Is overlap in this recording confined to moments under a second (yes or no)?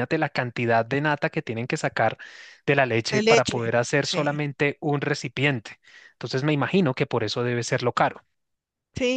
no